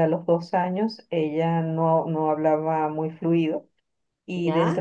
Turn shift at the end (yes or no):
no